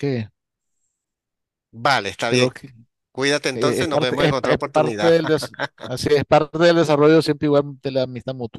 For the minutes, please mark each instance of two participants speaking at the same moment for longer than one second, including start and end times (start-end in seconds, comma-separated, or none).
3.5-5.2